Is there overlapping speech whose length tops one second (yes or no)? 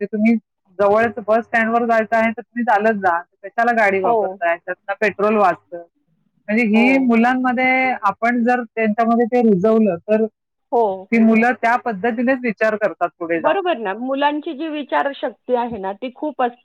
no